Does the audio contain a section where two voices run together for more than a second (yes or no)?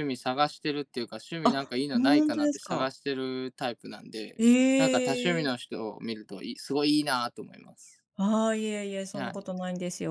yes